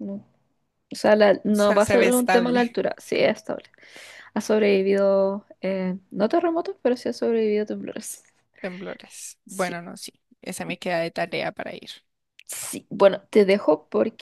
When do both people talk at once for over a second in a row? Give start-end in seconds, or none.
1.4-2.8